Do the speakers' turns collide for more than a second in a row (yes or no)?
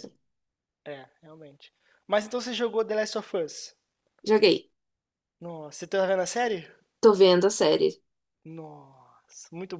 no